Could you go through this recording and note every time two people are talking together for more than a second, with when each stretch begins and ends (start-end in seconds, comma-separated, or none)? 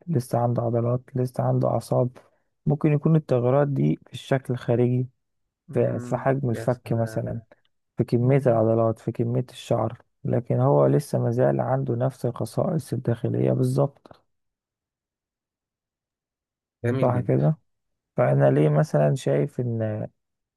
5.7-7.4